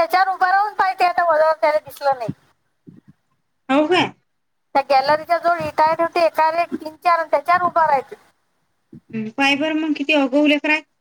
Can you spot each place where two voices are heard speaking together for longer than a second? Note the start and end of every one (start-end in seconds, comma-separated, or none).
none